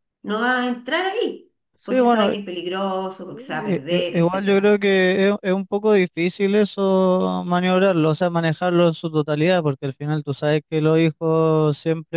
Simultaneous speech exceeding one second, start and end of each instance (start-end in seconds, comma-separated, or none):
3.3-4.8